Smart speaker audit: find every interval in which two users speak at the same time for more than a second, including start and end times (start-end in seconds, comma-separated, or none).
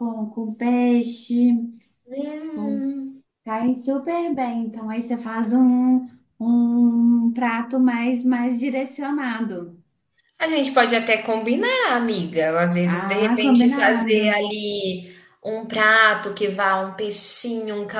12.8-14.5